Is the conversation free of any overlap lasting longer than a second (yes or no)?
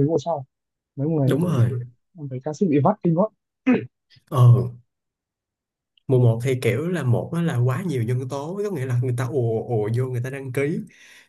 yes